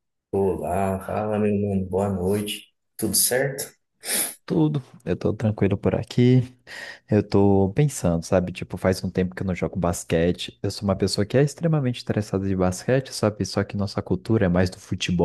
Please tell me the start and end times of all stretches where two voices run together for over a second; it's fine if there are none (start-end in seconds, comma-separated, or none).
none